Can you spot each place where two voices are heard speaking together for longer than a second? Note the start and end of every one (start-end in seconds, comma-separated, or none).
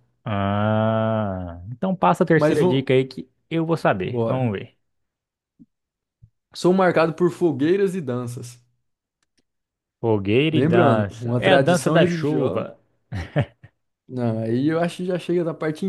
10.5-12.7